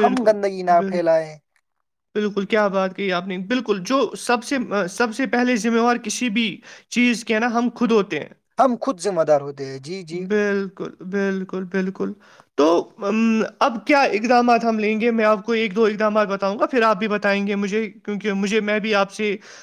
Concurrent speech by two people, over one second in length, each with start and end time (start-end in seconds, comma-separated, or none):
none